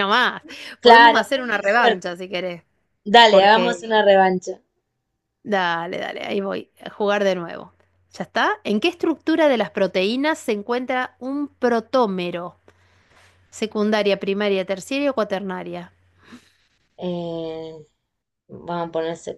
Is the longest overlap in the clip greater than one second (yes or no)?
yes